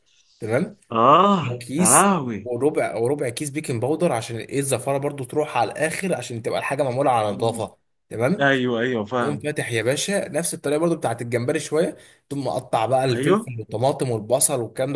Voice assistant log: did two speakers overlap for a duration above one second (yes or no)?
no